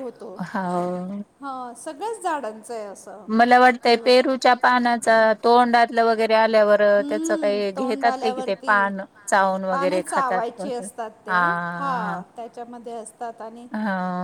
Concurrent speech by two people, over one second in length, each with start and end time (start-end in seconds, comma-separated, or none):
6.7-8.9